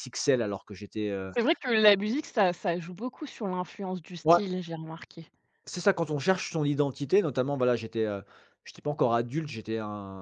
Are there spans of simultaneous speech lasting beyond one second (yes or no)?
no